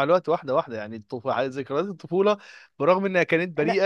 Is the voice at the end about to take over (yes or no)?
no